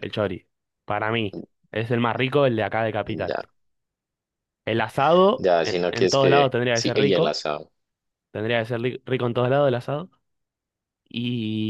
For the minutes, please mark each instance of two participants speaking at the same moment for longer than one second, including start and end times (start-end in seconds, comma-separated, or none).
5.4-7.4